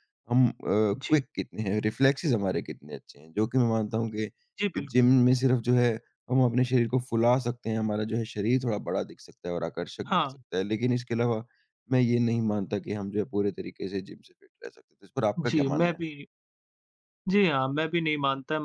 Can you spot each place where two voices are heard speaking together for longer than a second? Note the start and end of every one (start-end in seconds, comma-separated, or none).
none